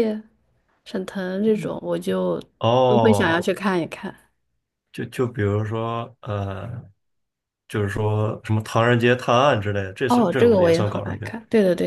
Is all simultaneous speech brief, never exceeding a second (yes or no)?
no